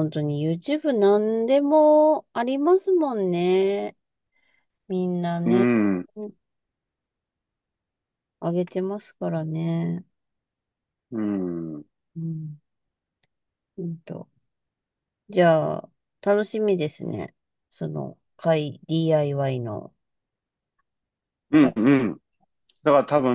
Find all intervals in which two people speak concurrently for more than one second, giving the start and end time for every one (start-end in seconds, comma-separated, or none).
none